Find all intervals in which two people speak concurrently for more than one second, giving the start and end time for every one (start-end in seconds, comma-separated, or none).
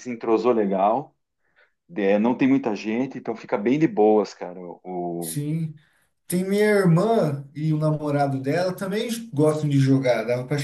none